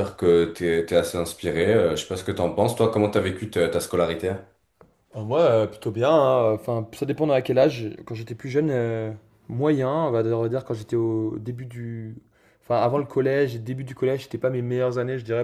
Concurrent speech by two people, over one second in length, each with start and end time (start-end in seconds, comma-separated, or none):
none